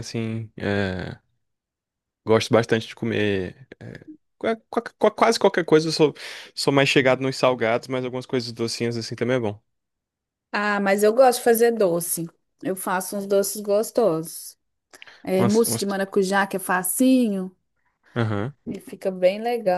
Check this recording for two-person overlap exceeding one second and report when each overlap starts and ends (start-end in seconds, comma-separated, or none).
none